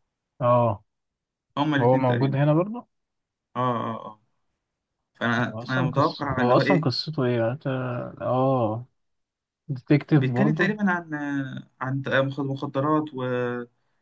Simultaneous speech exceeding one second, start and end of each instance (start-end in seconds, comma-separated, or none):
5.5-6.9